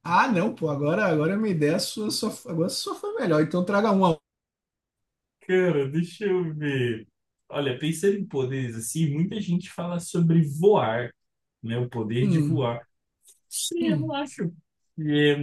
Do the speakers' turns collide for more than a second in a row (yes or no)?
no